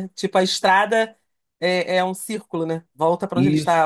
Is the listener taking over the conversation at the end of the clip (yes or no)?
yes